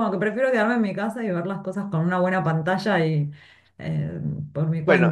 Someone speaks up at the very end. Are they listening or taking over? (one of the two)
taking over